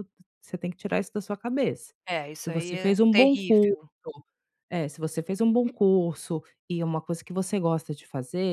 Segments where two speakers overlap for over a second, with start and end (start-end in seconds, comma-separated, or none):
2.4-3.7